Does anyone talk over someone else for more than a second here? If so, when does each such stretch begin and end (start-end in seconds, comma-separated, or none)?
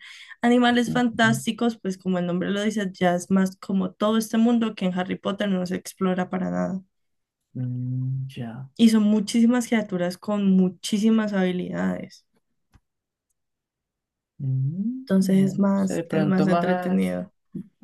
15.0-17.0